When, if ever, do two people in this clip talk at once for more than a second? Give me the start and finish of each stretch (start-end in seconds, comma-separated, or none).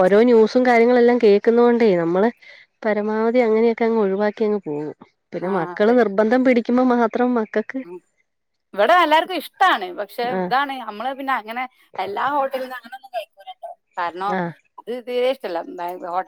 none